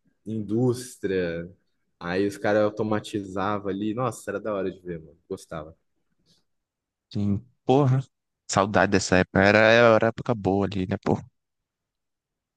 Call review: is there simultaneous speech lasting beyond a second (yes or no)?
no